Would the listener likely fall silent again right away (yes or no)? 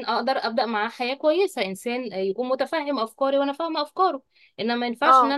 yes